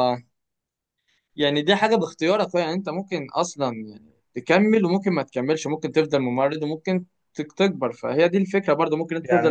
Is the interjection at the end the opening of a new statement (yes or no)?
yes